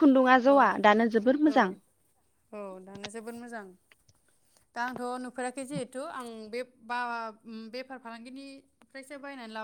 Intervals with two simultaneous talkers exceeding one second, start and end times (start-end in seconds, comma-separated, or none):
none